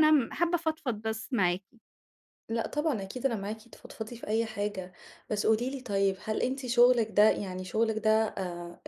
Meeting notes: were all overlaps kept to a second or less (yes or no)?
yes